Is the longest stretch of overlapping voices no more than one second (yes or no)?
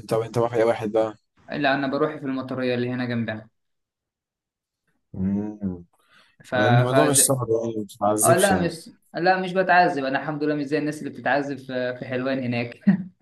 yes